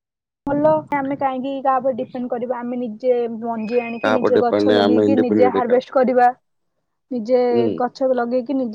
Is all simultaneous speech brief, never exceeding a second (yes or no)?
no